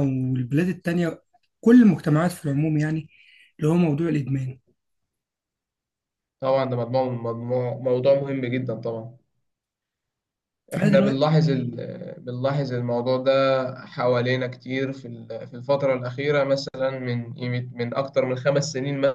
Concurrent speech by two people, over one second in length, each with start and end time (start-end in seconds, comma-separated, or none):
none